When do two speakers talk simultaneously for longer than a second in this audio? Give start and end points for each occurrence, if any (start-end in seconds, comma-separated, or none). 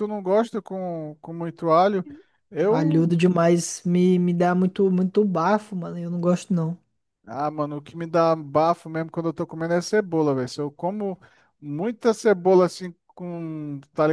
none